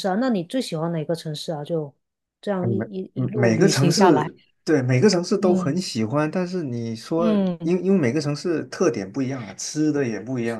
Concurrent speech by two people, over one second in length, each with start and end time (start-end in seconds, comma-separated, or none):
2.6-4.3